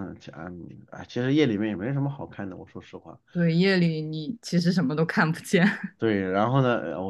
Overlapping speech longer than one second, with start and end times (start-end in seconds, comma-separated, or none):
none